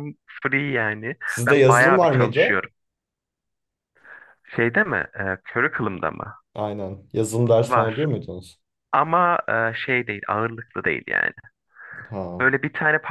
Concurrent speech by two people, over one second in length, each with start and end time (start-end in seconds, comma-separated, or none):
1.2-2.6